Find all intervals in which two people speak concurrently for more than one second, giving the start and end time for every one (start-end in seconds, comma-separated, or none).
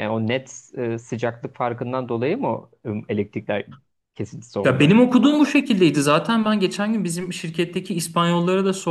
none